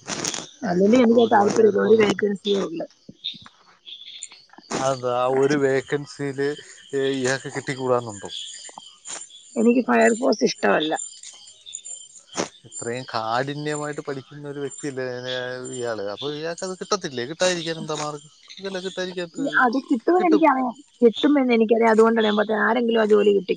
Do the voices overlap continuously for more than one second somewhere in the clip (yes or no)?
yes